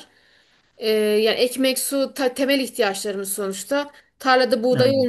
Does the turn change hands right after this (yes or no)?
no